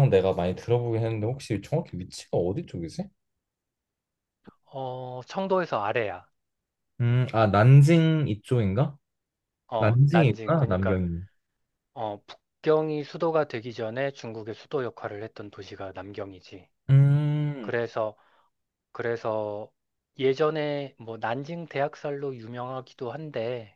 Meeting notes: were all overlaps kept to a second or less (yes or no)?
no